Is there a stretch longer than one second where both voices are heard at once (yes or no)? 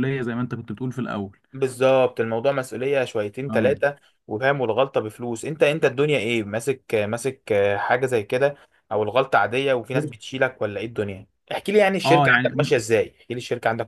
no